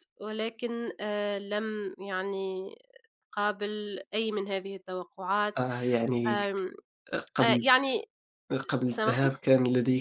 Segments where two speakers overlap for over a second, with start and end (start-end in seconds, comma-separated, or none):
none